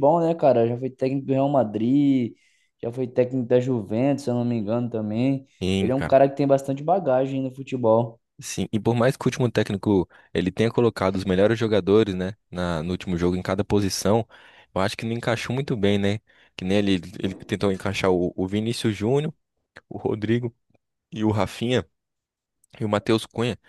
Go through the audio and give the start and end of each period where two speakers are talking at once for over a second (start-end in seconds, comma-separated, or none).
none